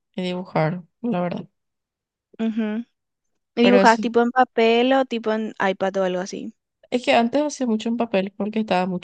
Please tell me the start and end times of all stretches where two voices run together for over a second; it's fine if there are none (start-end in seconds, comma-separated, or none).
none